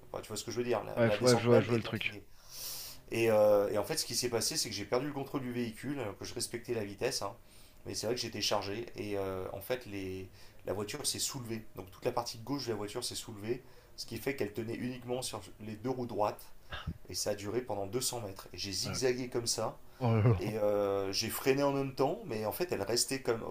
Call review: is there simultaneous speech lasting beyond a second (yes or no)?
yes